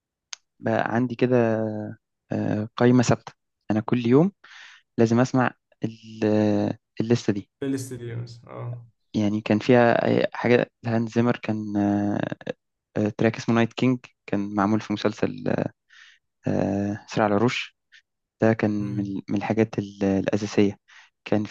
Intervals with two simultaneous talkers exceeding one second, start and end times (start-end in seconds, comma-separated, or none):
none